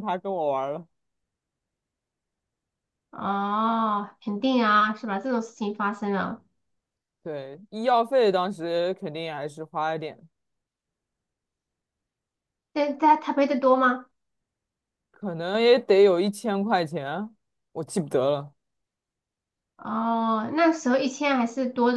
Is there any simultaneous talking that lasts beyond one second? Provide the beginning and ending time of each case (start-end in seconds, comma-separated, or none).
none